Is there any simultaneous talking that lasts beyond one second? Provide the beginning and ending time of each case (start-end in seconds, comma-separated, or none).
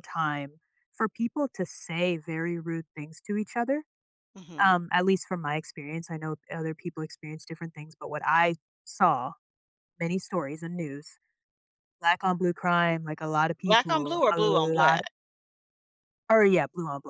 13.6-15.0